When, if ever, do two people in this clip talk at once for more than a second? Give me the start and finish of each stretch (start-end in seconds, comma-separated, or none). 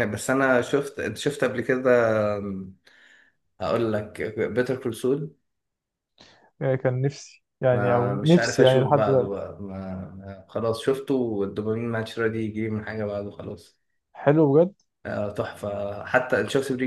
7.7-9.4